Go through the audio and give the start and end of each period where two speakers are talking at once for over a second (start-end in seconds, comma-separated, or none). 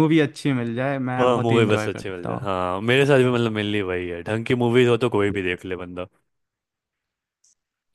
1.2-2.5